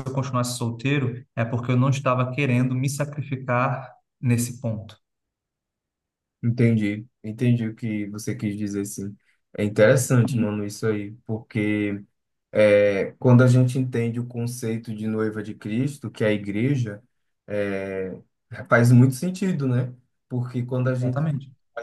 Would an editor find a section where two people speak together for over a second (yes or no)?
no